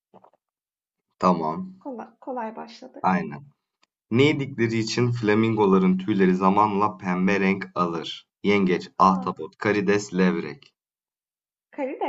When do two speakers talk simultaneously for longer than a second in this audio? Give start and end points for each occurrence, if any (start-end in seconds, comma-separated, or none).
none